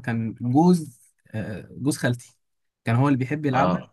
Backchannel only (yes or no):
yes